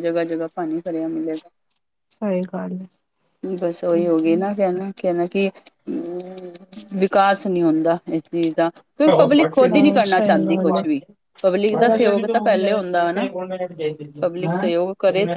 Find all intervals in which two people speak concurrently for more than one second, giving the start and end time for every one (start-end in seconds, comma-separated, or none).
9.2-10.9